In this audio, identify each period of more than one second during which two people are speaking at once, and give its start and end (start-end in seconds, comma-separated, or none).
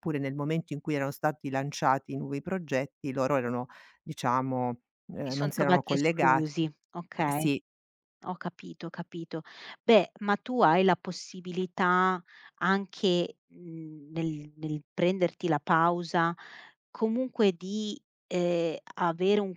5.2-6.5